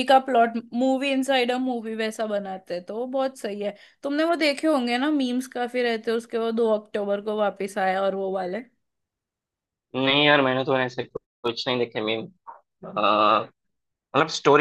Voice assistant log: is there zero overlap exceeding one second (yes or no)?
yes